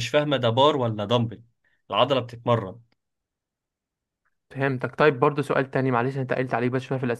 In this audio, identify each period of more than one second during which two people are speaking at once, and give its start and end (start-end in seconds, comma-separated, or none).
none